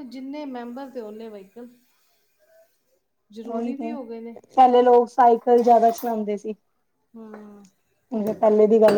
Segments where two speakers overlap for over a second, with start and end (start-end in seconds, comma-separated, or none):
none